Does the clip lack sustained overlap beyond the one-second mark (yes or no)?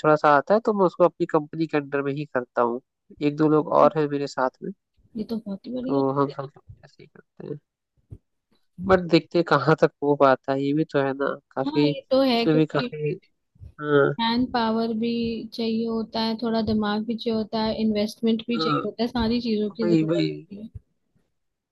no